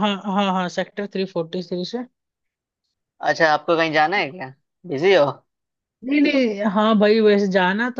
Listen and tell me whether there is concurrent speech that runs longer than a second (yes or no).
no